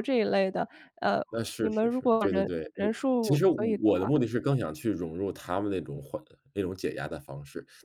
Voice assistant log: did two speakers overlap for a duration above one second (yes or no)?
yes